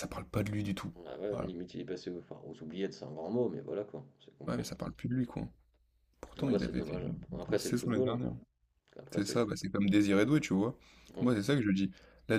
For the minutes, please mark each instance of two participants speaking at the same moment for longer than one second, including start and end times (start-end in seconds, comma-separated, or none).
6.4-8.2